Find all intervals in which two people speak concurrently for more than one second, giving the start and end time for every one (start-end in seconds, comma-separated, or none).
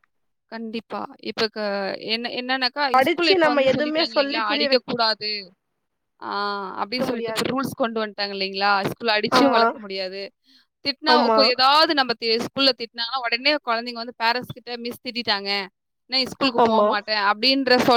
2.9-4.9